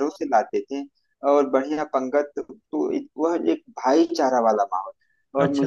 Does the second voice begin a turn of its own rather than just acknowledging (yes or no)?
no